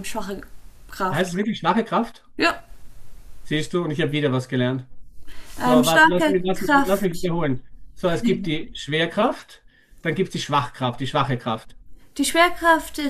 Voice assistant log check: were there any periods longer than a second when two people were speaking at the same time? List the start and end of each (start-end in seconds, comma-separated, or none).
5.6-7.3